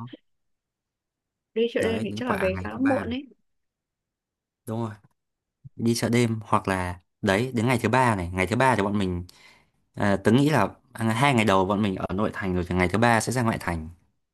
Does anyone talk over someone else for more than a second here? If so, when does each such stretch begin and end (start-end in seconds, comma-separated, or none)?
1.8-3.1